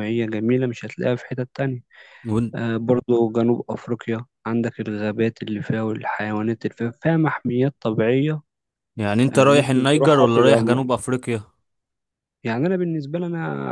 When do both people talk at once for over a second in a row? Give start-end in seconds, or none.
9.3-10.9